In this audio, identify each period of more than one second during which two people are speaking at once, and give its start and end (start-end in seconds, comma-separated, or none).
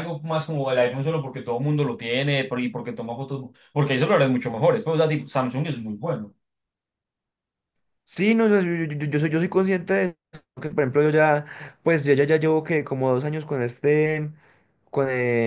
none